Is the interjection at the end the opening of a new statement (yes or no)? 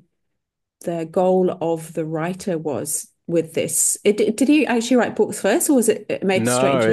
yes